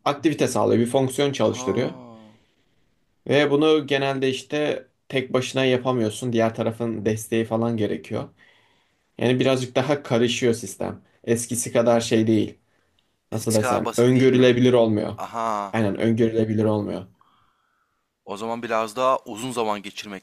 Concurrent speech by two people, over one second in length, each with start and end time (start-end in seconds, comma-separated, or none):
13.3-14.6